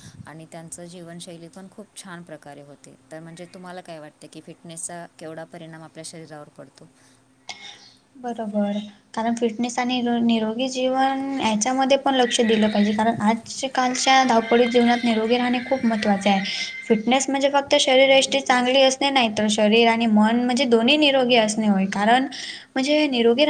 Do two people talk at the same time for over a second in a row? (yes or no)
no